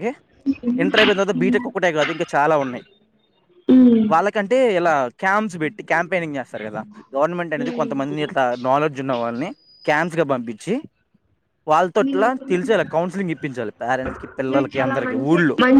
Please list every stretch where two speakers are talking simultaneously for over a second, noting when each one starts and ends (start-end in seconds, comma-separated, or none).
none